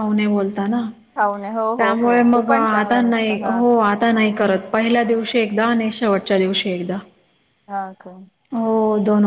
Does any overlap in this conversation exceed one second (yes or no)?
yes